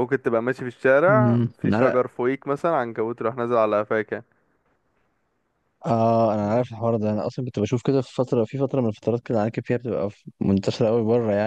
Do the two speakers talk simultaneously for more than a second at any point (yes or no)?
no